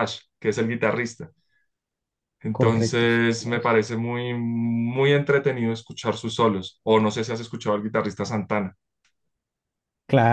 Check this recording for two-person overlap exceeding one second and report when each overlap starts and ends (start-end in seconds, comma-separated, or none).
2.5-3.8